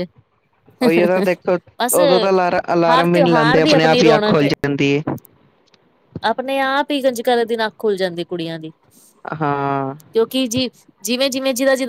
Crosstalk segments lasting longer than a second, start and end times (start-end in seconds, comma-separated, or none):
2.9-4.5